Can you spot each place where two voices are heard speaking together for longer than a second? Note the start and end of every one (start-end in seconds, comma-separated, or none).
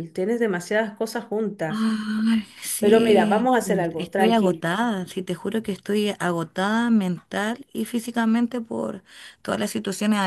2.8-4.6